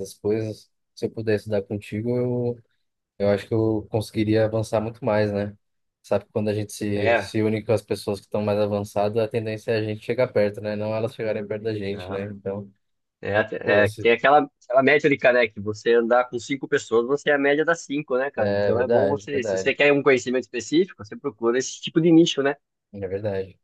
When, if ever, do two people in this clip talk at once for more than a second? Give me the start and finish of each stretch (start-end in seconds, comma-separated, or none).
18.4-19.8